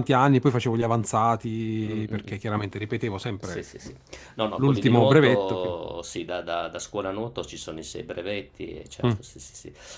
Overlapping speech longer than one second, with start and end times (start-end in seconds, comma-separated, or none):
4.5-5.8